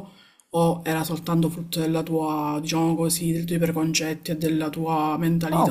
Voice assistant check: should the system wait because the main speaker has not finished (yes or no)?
no